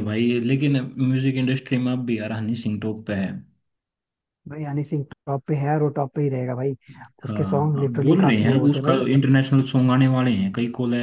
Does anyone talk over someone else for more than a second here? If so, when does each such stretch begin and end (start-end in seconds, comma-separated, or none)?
7.2-9.0